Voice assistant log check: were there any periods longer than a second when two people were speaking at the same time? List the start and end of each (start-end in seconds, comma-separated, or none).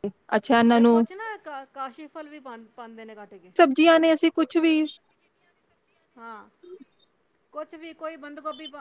none